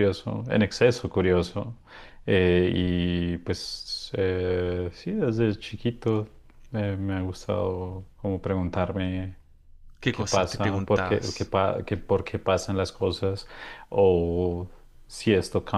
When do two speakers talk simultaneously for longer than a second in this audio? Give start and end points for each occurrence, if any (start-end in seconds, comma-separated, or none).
10.1-11.5